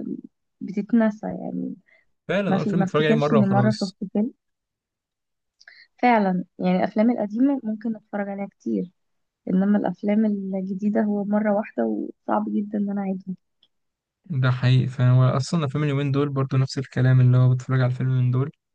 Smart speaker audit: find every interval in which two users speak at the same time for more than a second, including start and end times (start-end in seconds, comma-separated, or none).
2.5-4.0